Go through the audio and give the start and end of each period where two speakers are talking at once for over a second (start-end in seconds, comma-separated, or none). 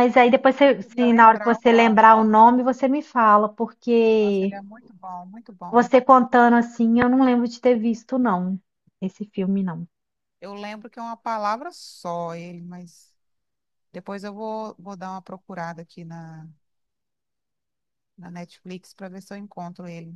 0.6-2.1